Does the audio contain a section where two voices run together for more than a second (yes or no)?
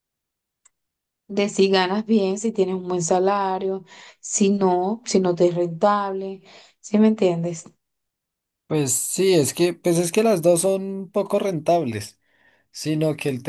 no